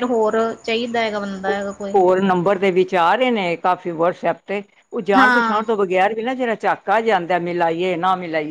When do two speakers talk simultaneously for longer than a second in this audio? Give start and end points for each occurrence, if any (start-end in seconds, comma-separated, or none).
none